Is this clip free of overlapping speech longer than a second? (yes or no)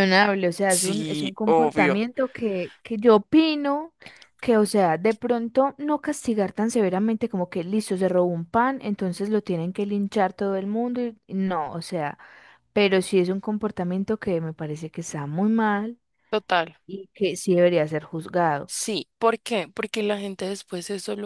no